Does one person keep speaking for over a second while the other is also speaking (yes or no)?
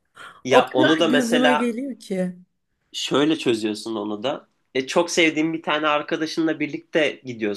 yes